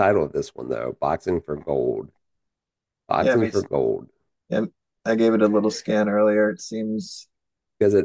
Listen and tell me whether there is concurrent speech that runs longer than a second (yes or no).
no